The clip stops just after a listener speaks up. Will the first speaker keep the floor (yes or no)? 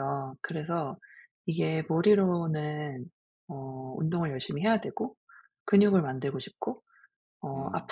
yes